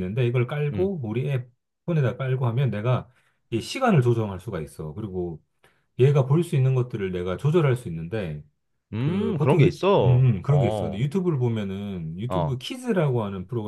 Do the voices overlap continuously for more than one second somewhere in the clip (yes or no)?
yes